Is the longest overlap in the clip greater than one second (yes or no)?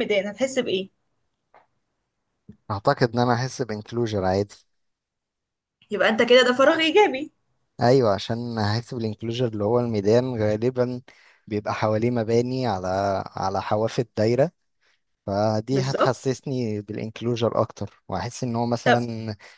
no